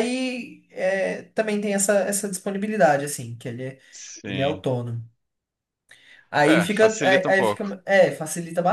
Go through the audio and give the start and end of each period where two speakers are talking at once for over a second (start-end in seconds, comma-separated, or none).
6.5-7.7